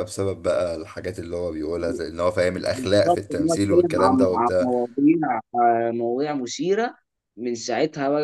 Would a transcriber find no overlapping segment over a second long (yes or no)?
no